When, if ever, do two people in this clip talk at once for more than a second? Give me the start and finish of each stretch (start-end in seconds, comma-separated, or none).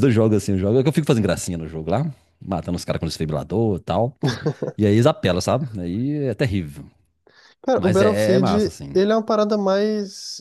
7.8-9.0